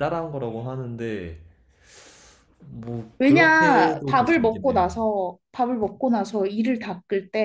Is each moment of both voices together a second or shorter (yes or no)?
no